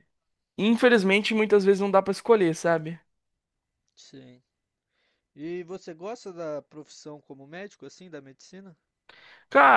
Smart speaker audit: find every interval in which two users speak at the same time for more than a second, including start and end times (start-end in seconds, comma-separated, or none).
none